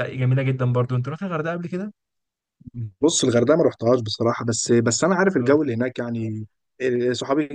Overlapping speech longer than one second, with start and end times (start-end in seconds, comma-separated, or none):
none